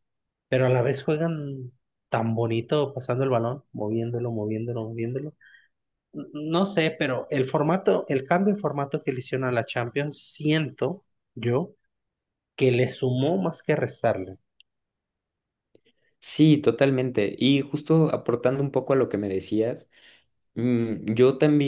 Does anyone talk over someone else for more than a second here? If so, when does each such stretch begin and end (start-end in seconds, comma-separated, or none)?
none